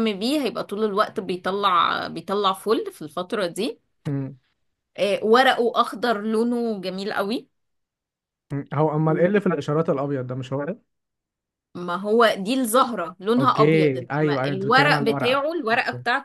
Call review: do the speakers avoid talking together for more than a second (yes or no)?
no